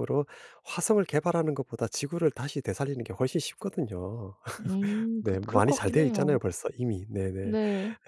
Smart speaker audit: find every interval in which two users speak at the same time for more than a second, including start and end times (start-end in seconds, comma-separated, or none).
5.2-6.4